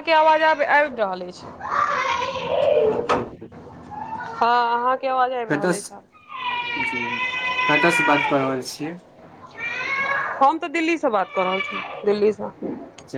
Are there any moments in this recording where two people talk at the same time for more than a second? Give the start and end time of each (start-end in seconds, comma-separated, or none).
none